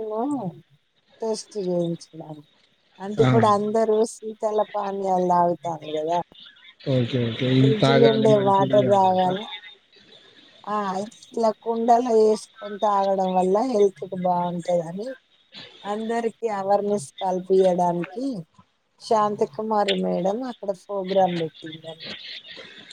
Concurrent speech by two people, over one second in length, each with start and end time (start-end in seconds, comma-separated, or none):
7.6-9.2